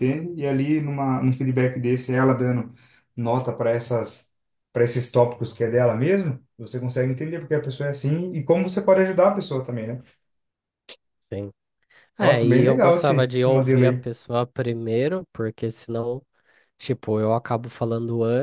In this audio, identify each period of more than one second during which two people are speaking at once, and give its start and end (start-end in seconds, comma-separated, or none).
12.2-14.1